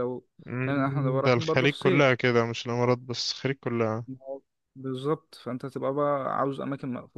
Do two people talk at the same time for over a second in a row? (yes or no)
yes